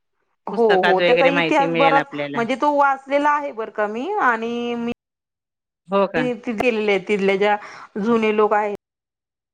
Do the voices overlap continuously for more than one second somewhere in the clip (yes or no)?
yes